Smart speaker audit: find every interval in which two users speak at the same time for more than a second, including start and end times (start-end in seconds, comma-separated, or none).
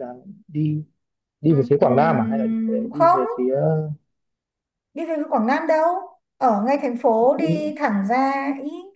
1.5-3.2